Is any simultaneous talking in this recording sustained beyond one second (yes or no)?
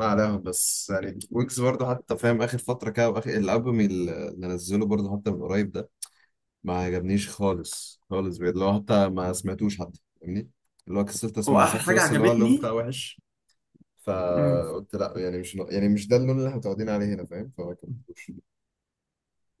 yes